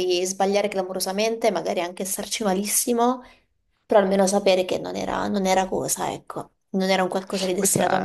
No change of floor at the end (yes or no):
no